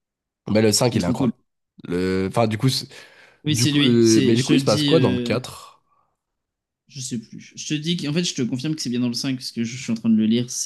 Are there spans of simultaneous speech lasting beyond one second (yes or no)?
yes